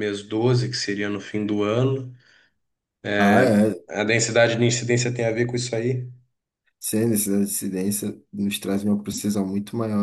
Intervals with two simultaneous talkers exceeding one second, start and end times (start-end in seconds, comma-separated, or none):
none